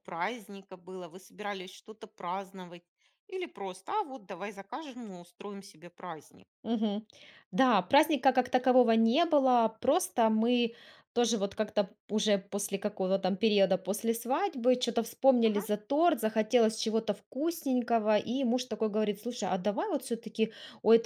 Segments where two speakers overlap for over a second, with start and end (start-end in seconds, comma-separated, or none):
none